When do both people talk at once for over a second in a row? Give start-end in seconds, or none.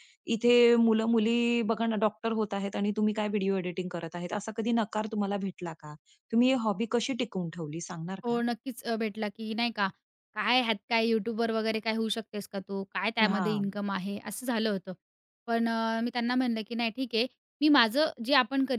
none